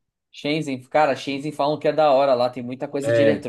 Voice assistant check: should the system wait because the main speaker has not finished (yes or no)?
yes